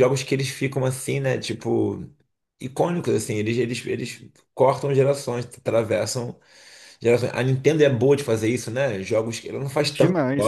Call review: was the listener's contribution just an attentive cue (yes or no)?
yes